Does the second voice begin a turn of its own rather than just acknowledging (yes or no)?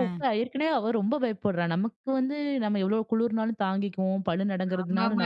yes